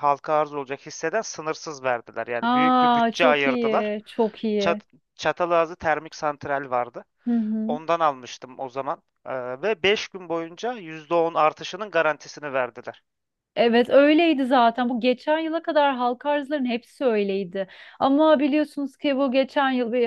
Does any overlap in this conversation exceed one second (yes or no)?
yes